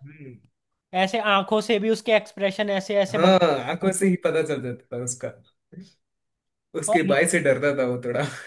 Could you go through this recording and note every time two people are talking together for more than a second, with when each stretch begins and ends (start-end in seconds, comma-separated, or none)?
none